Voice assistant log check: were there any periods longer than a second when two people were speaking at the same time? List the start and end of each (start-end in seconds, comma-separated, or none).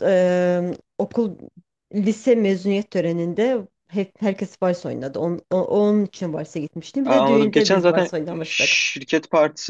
7.0-8.8